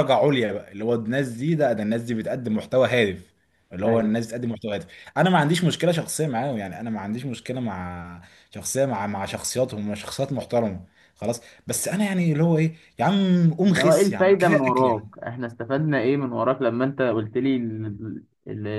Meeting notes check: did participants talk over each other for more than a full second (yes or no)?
yes